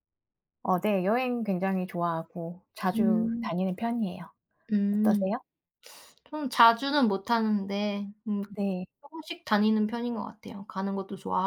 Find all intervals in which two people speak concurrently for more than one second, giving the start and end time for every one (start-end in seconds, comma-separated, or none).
none